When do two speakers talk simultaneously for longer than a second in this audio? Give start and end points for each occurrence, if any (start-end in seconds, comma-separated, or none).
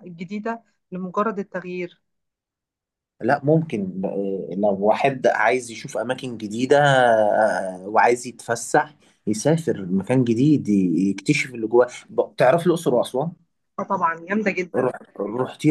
none